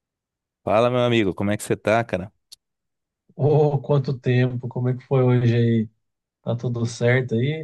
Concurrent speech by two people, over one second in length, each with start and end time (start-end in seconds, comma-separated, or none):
none